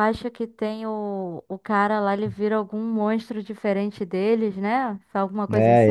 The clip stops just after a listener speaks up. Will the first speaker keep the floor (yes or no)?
no